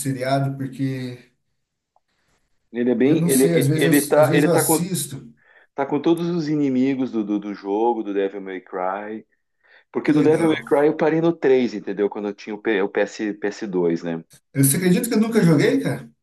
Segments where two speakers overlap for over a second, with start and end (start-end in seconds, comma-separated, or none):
3.0-4.9